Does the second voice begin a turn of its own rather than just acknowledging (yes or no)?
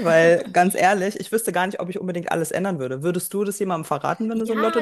yes